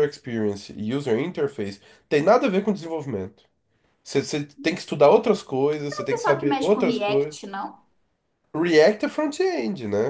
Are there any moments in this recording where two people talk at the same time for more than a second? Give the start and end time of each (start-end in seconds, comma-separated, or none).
5.9-7.4